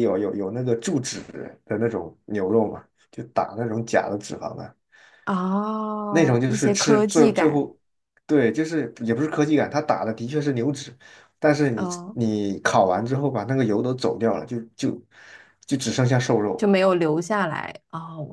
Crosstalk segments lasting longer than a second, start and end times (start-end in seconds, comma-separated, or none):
6.1-7.7